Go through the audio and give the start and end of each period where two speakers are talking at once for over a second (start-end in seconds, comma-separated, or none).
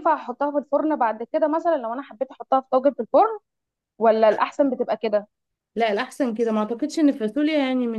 none